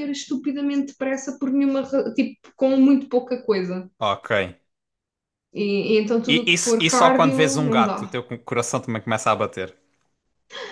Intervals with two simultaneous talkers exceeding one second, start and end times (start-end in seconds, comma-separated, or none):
6.3-8.2